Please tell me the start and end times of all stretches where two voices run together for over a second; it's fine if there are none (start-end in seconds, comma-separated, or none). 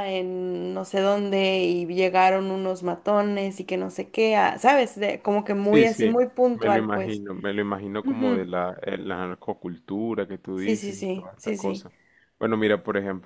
5.6-7.2, 10.6-11.9